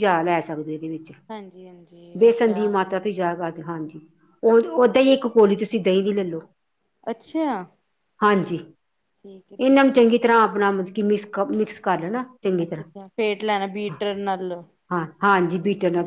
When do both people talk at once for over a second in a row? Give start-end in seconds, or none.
12.6-13.9